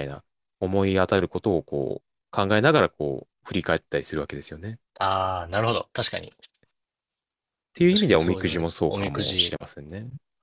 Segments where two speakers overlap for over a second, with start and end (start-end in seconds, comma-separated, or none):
7.9-9.6